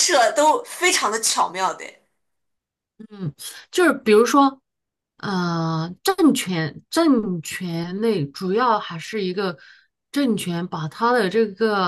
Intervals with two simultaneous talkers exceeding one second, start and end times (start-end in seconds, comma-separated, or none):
none